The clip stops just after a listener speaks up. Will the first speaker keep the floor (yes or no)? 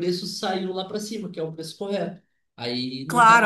no